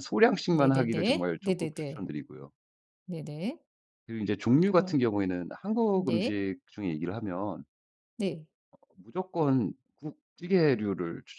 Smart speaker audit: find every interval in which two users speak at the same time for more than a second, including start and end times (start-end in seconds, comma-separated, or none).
0.5-2.1